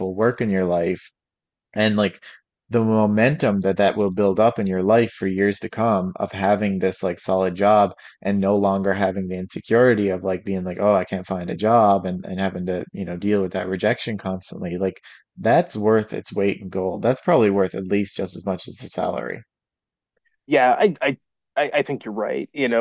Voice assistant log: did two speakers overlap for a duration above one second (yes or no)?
no